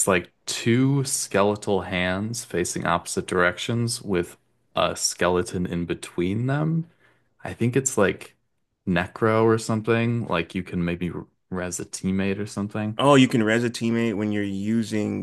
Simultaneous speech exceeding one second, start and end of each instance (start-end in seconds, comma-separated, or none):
none